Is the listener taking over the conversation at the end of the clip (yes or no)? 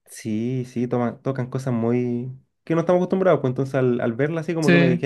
no